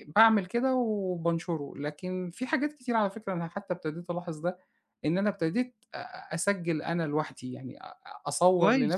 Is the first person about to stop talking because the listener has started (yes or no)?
no